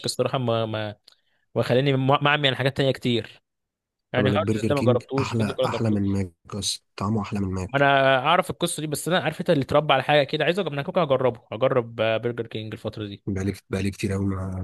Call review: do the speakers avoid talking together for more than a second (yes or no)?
no